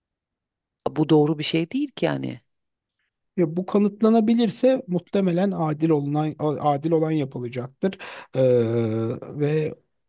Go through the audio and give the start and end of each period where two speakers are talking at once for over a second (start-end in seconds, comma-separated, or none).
none